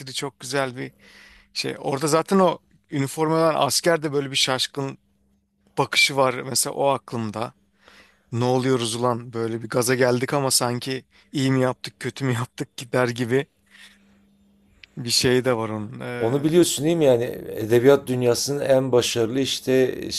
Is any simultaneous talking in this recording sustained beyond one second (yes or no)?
no